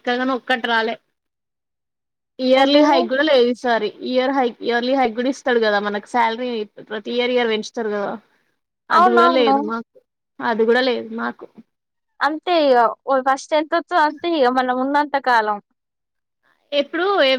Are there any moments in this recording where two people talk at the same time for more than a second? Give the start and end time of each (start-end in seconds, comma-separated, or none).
none